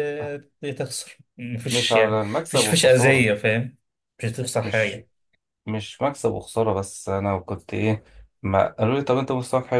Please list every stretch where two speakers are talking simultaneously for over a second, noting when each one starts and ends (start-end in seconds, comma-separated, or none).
1.7-3.3